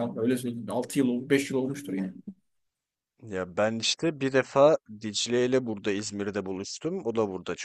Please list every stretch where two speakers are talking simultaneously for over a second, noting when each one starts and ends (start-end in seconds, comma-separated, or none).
none